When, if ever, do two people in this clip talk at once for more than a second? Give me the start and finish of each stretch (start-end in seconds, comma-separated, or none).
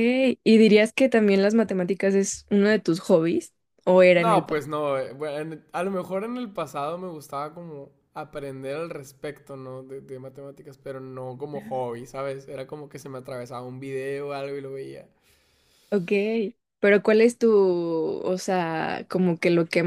none